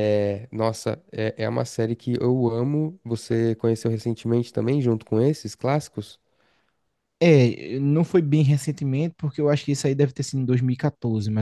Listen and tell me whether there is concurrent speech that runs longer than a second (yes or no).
no